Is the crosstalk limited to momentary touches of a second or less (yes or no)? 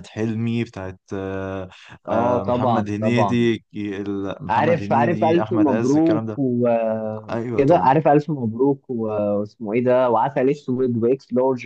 no